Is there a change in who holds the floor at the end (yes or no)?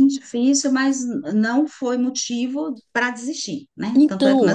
yes